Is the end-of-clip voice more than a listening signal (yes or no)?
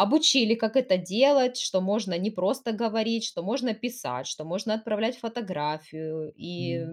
yes